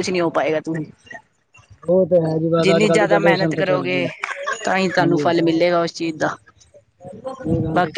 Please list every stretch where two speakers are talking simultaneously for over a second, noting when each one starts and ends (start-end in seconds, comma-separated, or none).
2.6-4.0